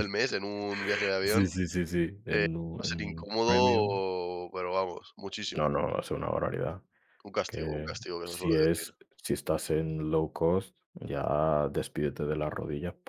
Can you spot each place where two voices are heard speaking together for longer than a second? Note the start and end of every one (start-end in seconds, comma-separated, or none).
2.2-4.0, 7.5-8.9